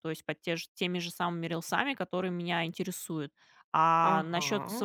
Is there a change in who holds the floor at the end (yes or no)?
no